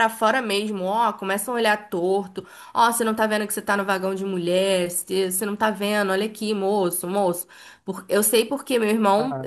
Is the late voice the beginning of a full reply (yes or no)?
yes